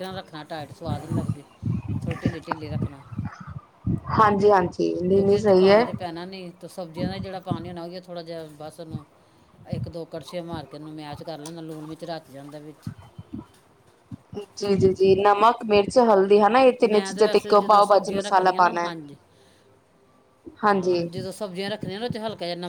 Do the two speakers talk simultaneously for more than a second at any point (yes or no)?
yes